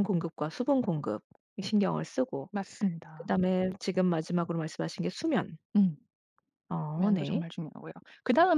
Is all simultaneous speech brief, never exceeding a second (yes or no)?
yes